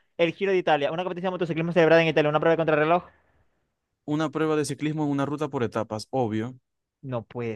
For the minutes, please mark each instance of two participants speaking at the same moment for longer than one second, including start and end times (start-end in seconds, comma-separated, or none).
none